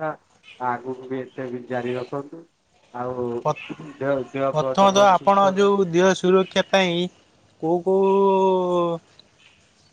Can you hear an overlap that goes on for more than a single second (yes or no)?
yes